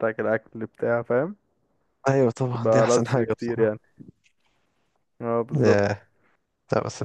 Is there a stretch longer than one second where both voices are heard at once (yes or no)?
yes